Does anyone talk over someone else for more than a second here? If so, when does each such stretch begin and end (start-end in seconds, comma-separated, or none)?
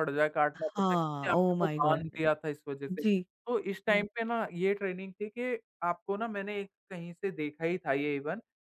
0.6-2.0